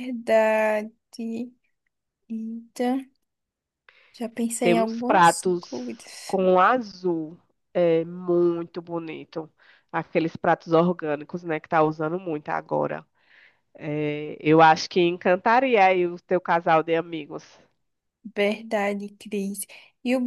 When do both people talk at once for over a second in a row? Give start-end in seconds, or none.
4.6-6.4